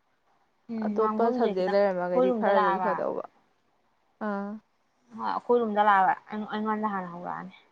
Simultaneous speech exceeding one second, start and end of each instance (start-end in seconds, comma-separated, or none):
0.8-2.9